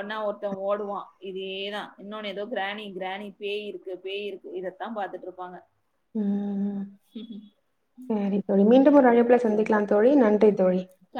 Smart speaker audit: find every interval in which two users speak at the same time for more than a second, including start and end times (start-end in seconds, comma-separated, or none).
none